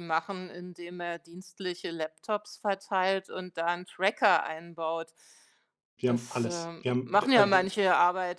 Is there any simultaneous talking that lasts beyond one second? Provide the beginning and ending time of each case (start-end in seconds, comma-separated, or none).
6.0-7.7